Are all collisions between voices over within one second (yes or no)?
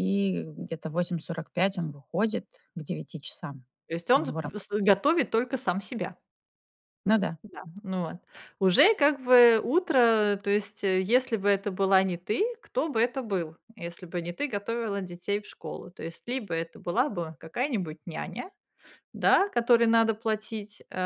yes